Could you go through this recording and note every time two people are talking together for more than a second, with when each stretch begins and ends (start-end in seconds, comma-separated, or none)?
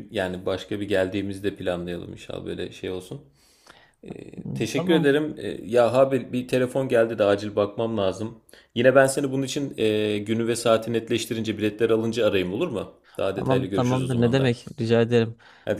13.3-14.6